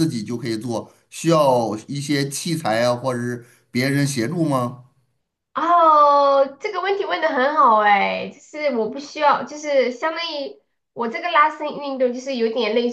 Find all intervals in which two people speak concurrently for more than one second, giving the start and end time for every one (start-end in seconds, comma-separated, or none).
none